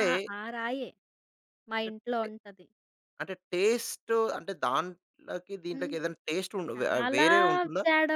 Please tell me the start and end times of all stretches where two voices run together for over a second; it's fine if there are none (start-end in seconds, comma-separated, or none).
none